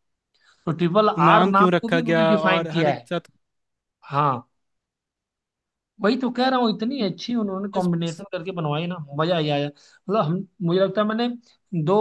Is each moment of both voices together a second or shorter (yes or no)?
no